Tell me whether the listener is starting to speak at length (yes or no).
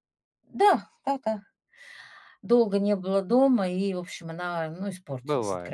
yes